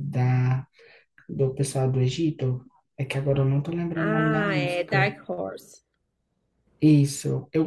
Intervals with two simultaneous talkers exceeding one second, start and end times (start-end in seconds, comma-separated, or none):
3.9-5.2